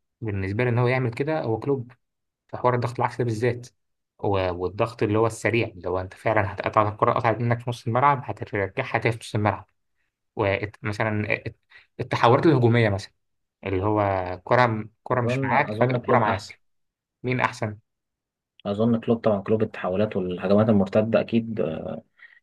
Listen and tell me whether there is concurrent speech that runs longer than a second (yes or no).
yes